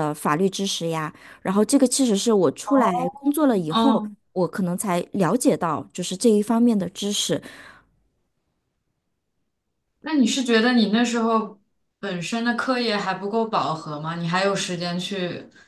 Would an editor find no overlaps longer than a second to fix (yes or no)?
yes